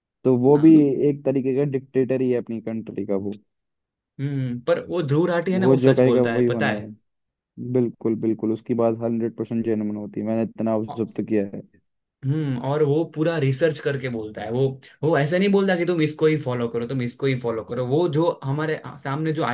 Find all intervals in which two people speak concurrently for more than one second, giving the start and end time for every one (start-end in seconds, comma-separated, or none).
5.5-6.9